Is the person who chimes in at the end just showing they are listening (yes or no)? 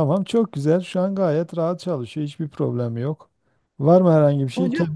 yes